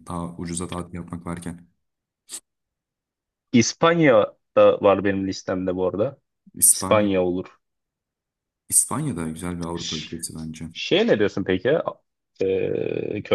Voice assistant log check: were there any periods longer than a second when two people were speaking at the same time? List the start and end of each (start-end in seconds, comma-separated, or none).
none